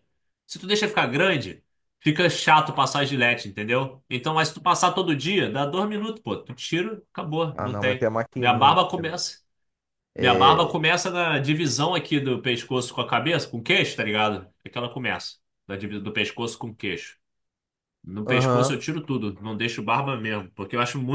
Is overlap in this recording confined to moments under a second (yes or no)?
no